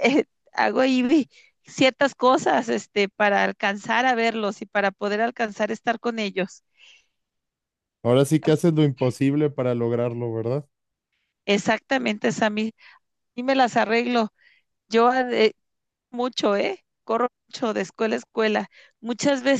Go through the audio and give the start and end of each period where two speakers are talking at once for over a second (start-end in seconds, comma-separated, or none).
none